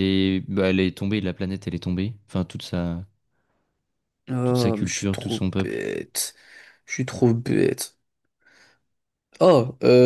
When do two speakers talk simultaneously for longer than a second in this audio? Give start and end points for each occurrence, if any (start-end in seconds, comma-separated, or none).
4.4-5.8